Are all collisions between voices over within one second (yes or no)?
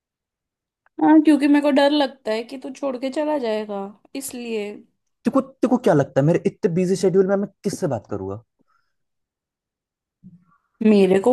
yes